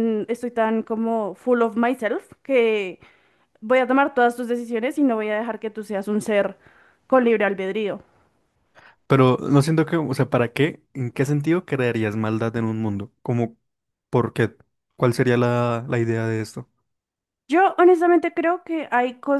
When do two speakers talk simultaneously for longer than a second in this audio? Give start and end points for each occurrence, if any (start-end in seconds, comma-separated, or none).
none